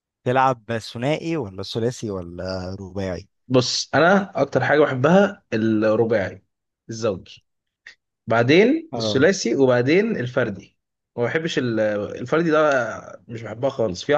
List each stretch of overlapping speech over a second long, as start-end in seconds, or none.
none